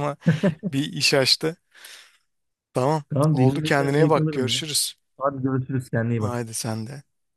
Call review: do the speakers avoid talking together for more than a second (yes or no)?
no